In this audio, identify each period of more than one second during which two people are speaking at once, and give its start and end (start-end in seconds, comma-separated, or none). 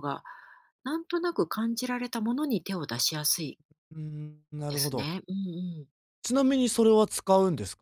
none